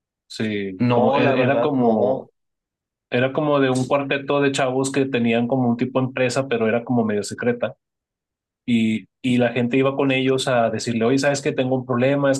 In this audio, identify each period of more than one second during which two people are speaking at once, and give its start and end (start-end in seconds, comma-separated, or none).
0.8-2.3